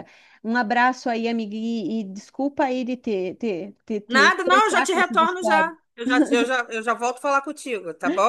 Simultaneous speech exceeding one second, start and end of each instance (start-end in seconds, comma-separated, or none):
4.1-5.7